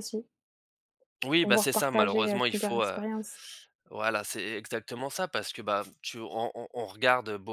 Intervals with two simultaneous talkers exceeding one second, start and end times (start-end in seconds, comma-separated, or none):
1.4-3.0